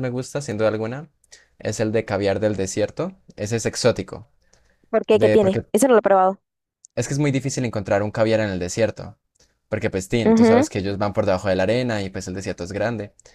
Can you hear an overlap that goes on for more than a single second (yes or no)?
no